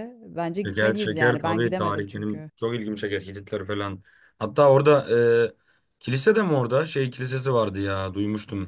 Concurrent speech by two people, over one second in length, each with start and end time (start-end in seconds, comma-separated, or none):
0.6-2.5